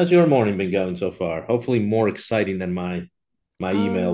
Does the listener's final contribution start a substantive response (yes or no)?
yes